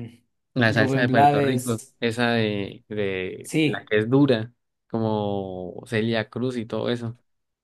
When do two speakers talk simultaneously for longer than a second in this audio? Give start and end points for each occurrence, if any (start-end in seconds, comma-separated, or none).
0.7-2.0